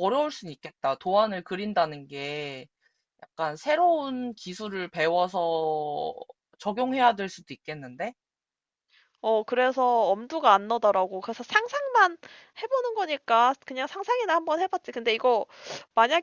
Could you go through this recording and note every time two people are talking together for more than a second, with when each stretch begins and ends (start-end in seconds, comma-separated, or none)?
none